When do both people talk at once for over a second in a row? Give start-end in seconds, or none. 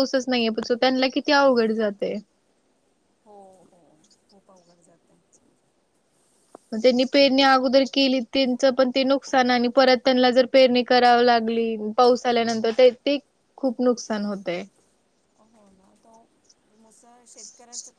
none